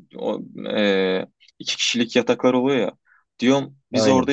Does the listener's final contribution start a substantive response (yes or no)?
no